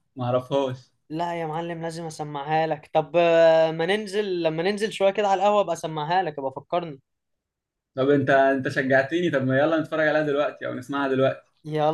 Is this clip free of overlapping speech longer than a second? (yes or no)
yes